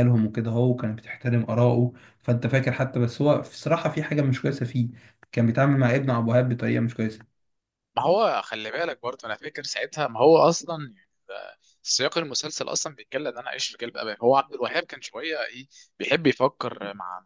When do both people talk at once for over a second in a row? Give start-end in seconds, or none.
none